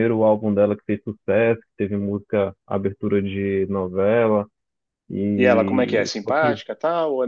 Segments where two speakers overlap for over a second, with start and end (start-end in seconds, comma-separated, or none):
5.4-6.6